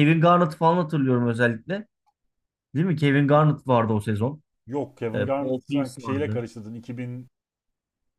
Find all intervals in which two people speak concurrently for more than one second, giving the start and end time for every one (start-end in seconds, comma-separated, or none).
5.1-6.4